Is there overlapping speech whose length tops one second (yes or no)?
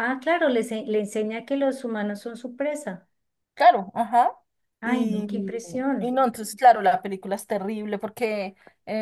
no